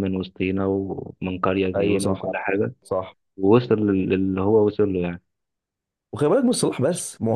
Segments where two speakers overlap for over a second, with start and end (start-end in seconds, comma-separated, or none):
none